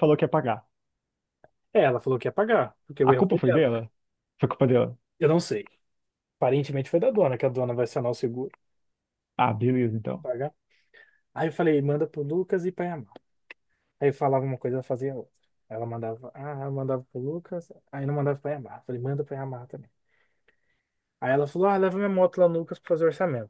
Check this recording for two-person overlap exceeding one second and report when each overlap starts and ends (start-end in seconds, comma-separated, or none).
none